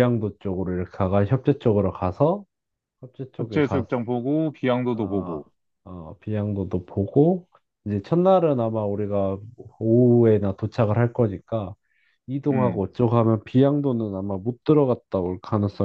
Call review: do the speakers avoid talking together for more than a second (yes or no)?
yes